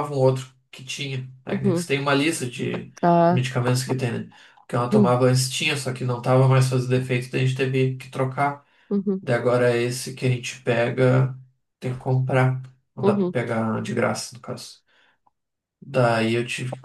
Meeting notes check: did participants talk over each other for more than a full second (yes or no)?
no